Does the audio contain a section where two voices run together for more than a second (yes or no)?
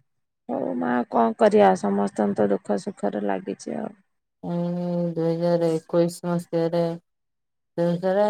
no